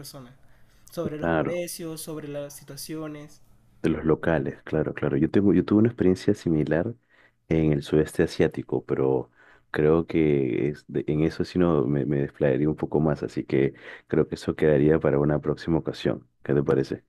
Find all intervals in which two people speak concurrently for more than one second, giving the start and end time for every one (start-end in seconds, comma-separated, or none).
none